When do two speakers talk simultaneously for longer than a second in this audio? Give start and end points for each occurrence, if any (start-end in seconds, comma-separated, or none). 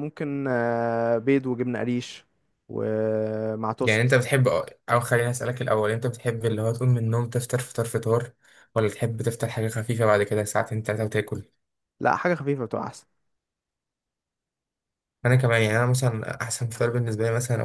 none